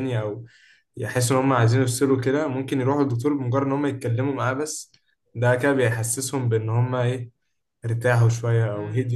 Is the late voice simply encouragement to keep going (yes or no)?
no